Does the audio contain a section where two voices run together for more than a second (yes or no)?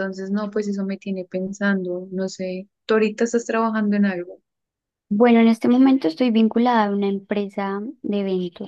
no